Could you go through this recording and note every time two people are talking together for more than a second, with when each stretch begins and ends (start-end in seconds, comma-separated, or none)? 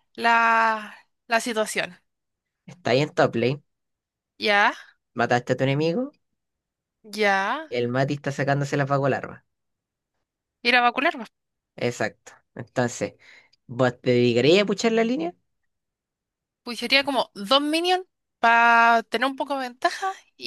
none